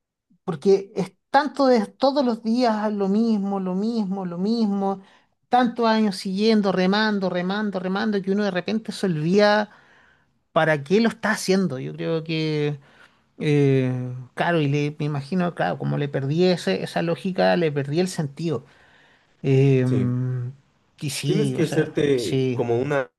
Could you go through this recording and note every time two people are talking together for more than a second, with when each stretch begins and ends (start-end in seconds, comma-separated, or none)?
21.2-22.6